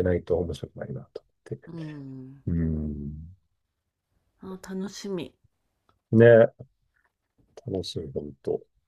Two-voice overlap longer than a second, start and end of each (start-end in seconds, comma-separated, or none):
none